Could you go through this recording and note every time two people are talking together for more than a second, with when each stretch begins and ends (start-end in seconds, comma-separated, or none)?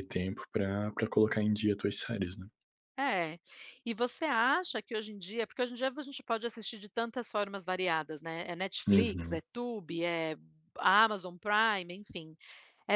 none